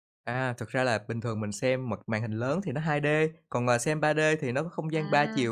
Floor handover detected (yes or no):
no